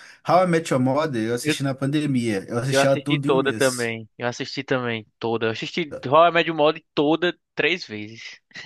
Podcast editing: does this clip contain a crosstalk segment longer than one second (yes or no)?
yes